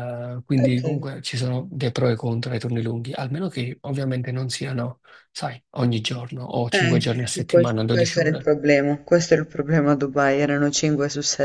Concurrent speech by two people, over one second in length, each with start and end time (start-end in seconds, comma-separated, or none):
6.7-8.5